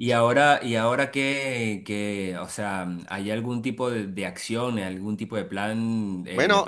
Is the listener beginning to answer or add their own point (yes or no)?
no